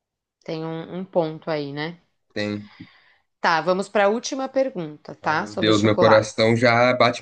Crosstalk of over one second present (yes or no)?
yes